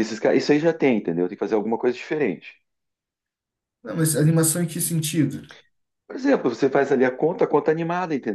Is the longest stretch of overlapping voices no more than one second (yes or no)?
yes